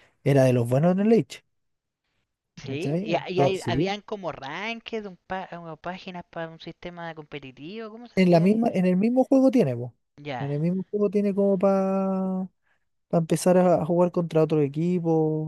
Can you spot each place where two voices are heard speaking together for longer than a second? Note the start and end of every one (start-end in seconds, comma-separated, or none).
2.7-4.0